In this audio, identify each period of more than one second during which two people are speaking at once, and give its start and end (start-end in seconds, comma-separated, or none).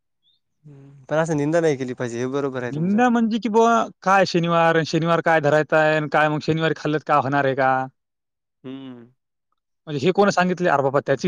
none